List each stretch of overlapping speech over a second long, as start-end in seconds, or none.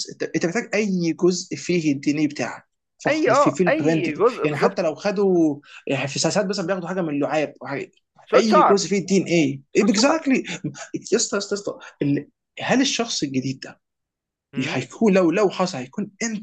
3.1-4.8